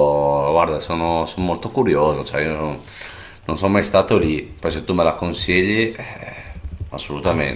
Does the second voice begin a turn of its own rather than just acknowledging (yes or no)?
yes